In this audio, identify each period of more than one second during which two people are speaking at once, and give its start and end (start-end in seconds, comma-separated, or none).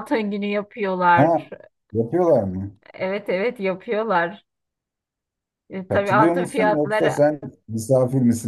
5.9-7.2